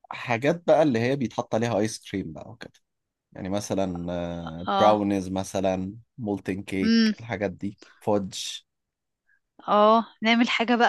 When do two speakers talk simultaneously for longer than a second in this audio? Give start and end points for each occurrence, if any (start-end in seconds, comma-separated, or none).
none